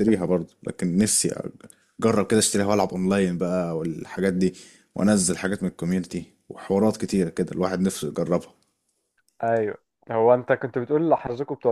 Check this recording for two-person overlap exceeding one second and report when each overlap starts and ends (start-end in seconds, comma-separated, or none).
none